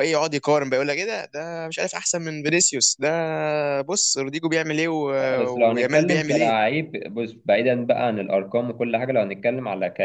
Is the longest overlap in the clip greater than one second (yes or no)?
yes